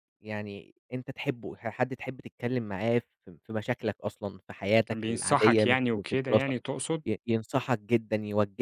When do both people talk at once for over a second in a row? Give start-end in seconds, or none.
4.9-6.5